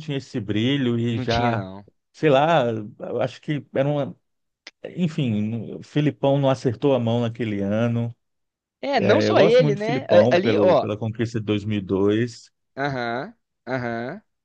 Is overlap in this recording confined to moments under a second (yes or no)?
no